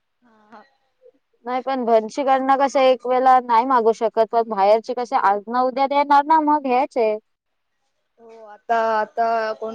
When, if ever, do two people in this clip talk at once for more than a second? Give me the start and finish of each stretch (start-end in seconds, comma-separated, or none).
none